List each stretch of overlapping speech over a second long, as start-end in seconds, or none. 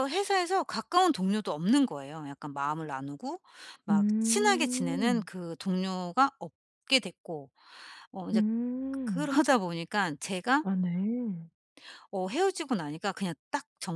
3.9-5.3